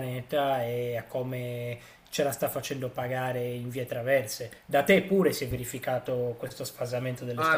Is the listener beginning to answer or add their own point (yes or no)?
yes